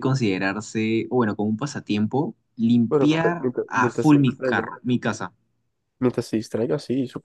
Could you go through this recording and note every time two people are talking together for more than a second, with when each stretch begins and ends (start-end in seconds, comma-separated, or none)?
2.9-4.6